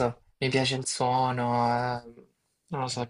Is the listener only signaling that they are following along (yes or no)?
yes